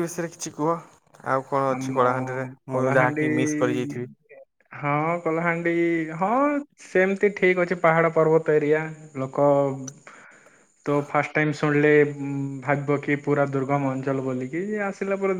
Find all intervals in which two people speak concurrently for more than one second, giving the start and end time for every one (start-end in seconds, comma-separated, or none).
none